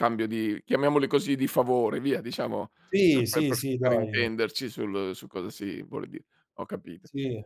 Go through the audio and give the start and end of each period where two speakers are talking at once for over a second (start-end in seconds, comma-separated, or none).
3.1-4.3